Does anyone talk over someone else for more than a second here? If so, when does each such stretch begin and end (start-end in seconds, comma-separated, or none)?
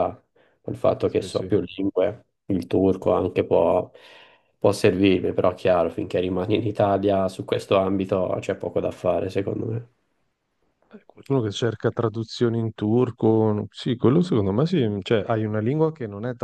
none